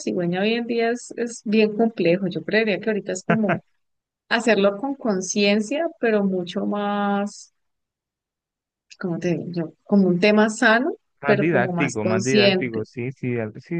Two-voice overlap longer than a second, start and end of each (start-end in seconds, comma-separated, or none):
11.2-12.8